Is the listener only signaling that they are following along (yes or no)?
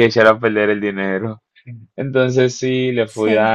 yes